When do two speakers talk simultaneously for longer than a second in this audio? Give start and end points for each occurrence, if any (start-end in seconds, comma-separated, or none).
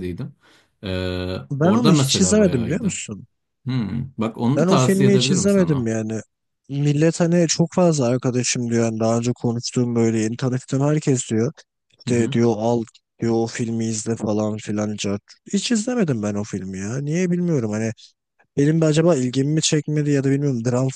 1.5-2.9, 4.5-5.9